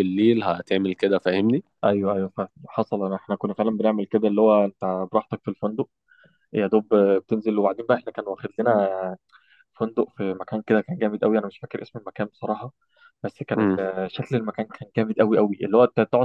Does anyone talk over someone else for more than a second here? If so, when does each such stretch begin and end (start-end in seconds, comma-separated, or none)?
none